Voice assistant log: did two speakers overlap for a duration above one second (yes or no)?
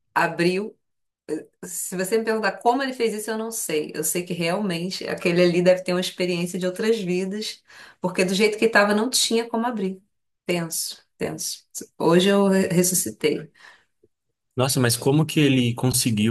no